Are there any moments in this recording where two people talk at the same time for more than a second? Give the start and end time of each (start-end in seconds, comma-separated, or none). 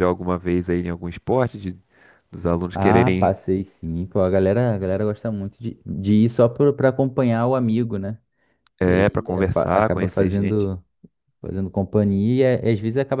8.9-10.7